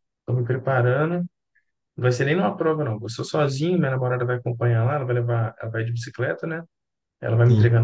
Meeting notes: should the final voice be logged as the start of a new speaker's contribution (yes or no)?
no